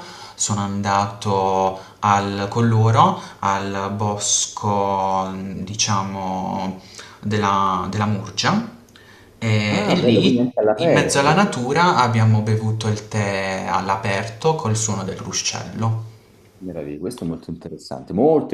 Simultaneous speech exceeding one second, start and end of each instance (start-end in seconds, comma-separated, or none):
9.7-11.5